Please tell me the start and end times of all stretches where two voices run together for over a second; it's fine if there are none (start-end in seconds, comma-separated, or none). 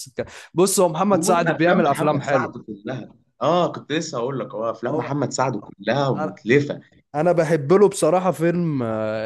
1.1-2.5